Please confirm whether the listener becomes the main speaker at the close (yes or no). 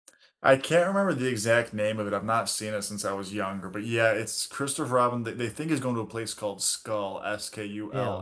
no